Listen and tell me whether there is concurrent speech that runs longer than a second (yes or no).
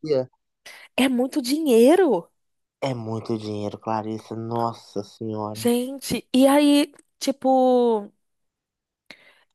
no